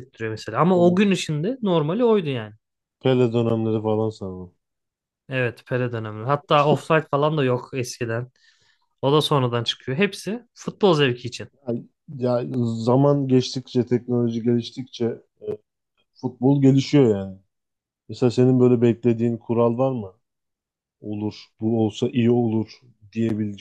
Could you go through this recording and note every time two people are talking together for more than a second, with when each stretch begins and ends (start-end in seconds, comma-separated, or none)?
none